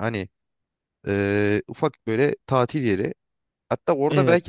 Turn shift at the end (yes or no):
no